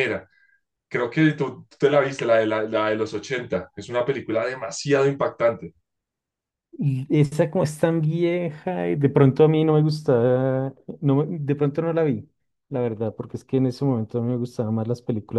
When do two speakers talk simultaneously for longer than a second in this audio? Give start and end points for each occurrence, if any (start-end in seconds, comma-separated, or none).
none